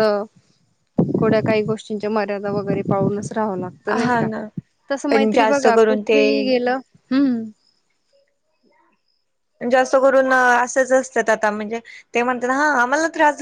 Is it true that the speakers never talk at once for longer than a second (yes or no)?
no